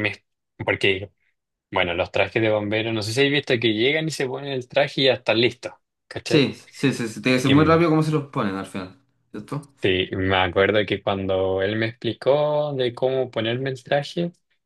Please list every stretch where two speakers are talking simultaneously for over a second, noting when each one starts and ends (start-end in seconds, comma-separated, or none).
none